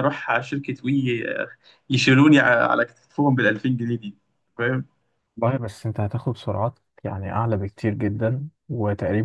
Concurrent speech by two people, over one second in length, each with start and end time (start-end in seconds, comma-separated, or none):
none